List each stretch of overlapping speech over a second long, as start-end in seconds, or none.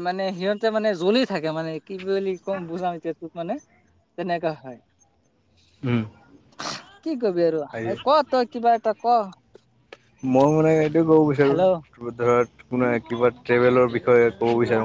none